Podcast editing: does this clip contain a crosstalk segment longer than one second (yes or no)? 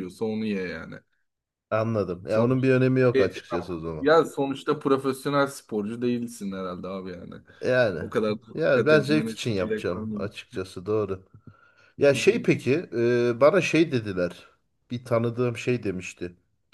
yes